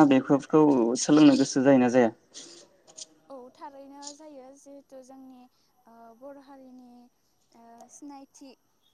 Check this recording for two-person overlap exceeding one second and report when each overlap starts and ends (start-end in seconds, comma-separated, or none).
none